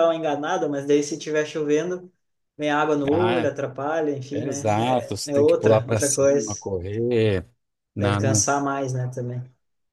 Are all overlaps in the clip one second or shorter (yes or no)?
no